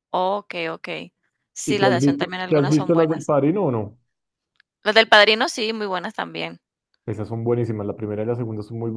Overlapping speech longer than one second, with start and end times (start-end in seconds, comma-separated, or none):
1.6-3.3